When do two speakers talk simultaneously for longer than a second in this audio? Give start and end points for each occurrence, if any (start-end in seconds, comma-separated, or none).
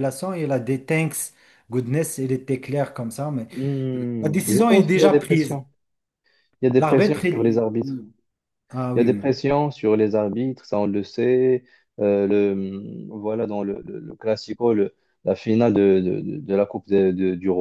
4.2-5.6, 6.8-8.0